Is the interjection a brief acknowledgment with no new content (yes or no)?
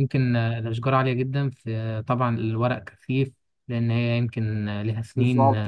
no